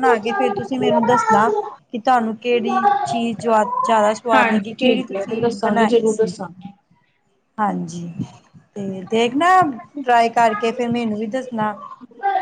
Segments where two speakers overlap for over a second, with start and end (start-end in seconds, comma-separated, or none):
4.3-6.3